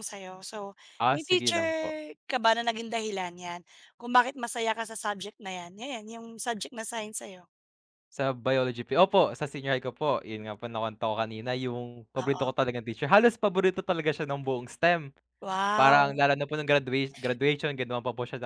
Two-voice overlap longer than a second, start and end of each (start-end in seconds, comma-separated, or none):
none